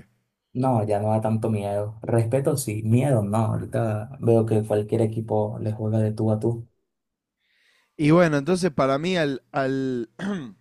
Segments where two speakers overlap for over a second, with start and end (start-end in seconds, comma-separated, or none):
none